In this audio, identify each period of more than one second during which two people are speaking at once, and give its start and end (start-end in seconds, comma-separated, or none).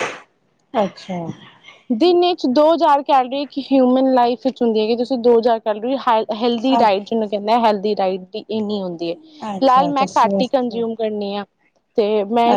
9.6-10.8